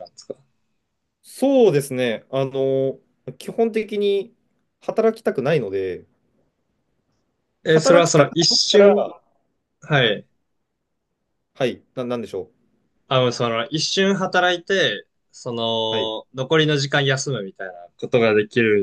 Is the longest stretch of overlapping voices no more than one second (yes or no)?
no